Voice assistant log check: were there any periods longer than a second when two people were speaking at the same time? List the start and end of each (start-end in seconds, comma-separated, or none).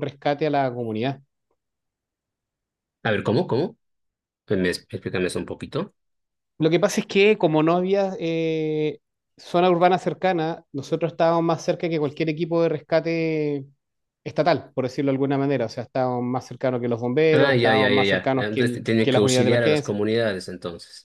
17.3-19.9